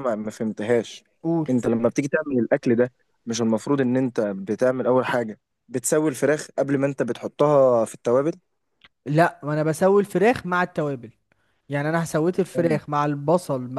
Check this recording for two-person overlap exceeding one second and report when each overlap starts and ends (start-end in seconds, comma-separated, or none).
none